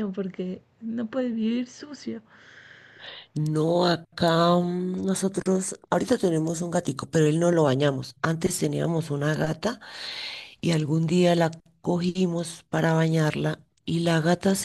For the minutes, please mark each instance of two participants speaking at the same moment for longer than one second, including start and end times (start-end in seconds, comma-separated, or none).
none